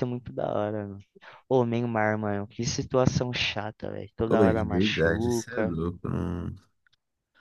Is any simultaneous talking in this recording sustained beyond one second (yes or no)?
yes